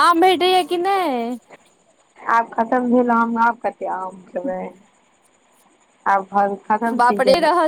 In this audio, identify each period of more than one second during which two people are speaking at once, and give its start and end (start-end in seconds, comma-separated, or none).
none